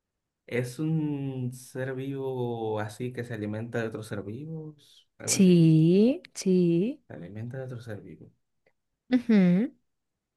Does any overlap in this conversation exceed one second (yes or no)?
no